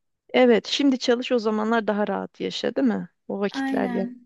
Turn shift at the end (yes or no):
yes